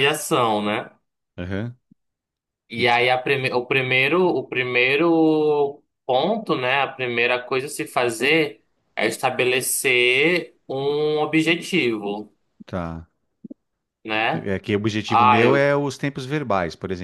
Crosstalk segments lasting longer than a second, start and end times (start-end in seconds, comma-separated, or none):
none